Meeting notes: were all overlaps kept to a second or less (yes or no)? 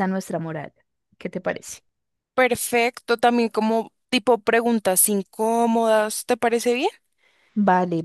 yes